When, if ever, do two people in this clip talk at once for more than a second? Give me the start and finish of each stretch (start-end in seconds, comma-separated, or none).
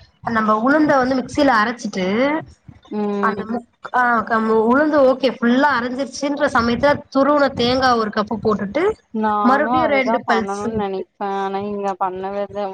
9.5-11.0